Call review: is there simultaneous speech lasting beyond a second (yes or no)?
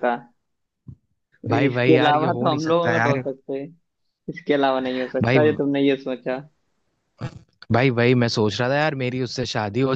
yes